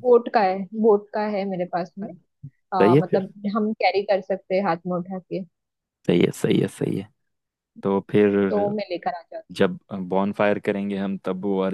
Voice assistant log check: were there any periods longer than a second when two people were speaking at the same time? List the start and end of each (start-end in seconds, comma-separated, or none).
none